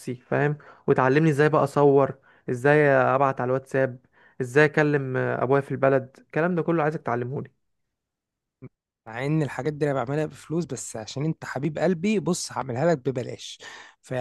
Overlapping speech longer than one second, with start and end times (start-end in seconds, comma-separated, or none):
none